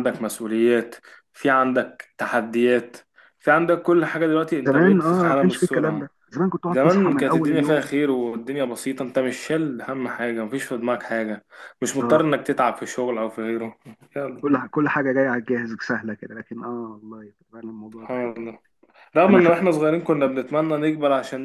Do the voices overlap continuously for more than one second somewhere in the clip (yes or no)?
yes